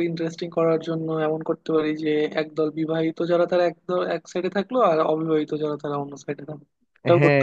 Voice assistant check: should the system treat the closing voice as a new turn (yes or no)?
yes